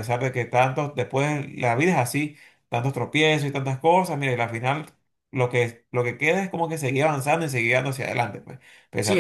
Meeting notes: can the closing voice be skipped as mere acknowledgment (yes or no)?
no